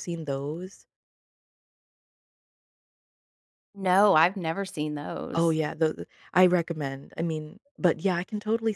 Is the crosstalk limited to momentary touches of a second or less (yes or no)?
yes